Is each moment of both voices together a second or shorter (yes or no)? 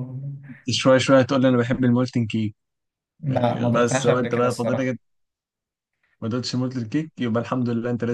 no